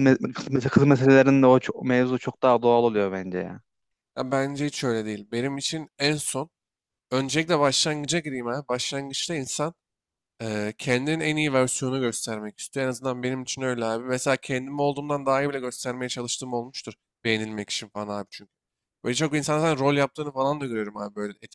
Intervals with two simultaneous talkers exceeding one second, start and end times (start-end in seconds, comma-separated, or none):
none